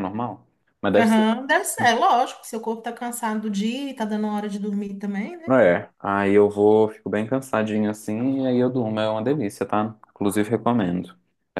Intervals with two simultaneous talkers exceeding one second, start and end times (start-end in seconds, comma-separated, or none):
none